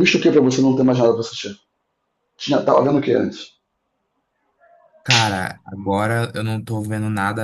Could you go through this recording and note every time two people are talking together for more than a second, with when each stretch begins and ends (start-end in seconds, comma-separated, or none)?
none